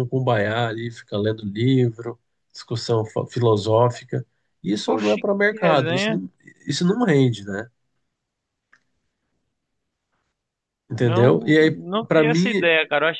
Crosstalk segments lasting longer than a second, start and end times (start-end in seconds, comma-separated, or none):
4.9-6.2, 11.0-12.7